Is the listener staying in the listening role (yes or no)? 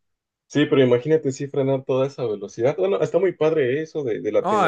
no